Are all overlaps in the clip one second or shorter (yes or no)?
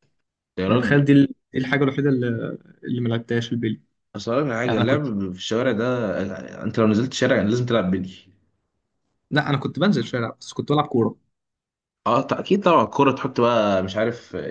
yes